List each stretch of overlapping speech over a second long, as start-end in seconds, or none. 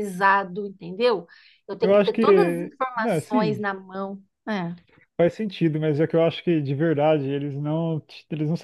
1.8-3.6